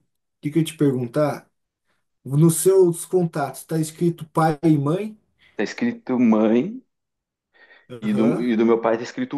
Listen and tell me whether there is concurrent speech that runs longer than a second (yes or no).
no